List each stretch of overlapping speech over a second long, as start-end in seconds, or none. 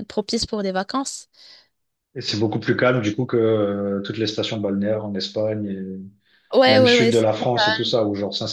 none